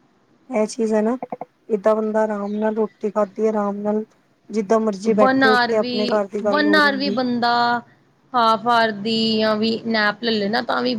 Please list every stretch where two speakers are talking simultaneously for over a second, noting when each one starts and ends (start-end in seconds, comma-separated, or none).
none